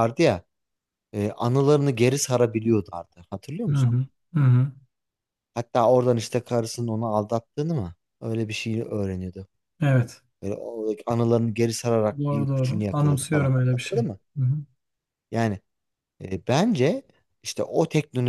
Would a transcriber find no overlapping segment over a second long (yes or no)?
no